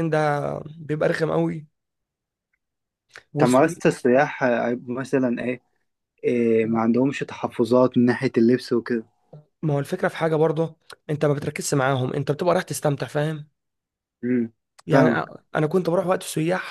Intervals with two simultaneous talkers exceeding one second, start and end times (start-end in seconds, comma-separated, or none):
none